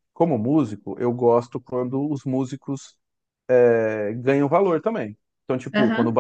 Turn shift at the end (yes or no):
no